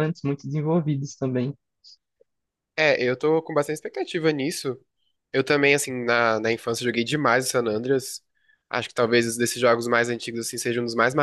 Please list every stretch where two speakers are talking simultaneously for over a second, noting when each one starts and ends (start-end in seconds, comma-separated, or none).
none